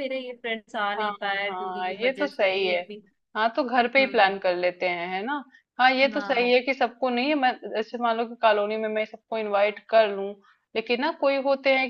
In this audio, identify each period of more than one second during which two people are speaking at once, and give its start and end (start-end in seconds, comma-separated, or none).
0.8-2.8